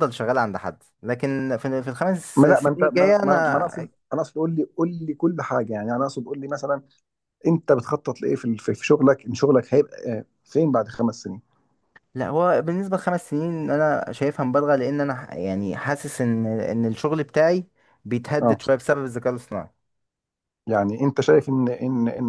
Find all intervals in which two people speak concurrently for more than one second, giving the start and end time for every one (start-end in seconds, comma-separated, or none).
2.4-3.7